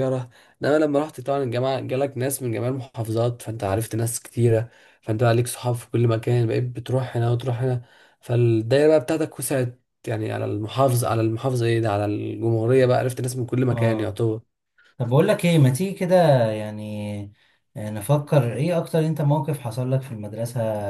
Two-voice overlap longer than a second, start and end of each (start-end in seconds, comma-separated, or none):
none